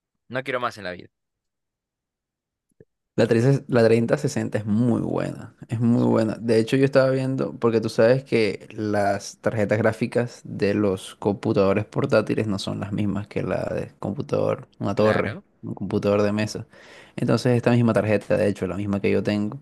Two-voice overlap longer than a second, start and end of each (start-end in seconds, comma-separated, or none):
none